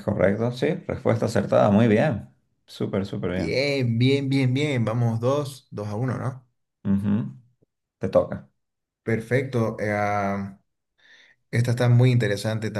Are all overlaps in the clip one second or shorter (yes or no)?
yes